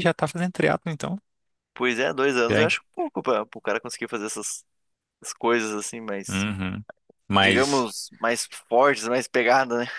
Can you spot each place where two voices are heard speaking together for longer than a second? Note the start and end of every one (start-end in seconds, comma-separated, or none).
none